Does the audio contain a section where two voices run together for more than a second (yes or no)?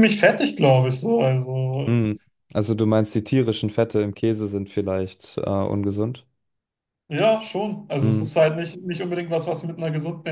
no